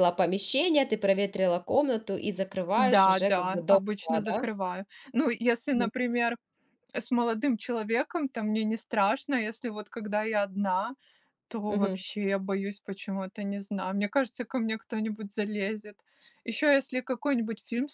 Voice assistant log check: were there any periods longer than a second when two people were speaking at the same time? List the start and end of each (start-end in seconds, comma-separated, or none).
2.8-4.5